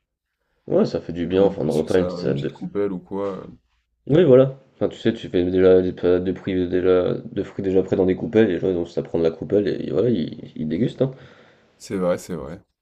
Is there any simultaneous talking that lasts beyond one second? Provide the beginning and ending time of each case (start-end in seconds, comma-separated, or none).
1.3-2.5